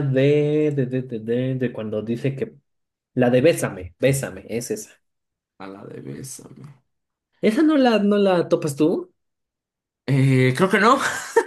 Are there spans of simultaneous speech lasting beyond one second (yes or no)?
no